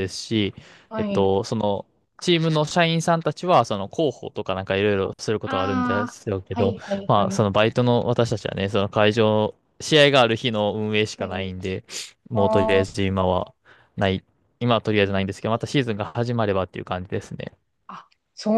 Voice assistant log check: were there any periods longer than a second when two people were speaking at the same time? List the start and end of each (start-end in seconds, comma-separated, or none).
5.5-7.4